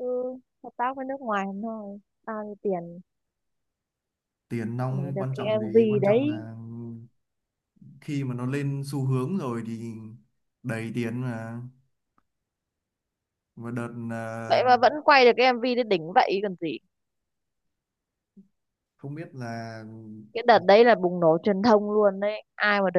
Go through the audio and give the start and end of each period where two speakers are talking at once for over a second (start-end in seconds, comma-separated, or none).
4.9-6.4